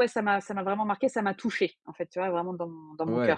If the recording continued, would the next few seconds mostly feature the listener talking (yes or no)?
yes